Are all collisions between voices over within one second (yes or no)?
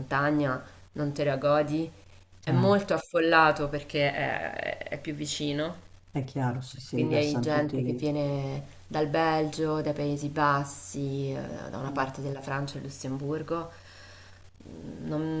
no